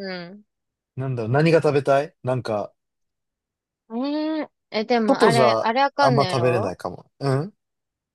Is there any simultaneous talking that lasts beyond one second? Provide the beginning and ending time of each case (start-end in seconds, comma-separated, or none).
5.1-6.7